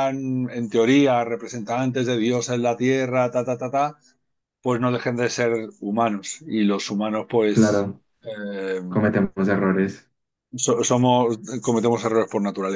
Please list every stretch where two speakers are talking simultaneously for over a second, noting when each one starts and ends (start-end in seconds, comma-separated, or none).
none